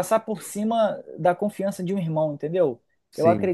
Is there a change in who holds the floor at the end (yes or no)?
no